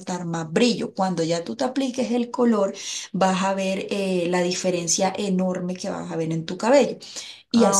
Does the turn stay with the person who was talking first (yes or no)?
no